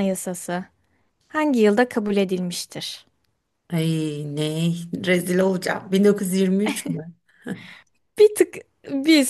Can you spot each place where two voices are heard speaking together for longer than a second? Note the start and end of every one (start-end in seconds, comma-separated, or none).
none